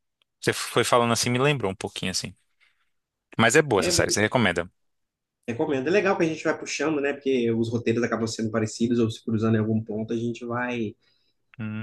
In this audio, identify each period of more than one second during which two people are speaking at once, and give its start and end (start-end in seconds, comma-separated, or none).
none